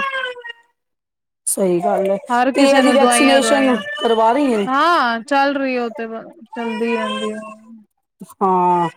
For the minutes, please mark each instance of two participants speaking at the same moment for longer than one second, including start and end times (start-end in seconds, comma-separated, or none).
2.5-3.8